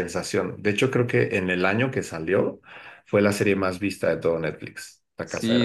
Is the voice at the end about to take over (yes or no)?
yes